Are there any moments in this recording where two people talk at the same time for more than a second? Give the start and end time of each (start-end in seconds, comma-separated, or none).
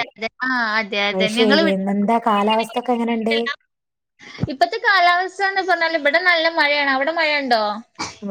none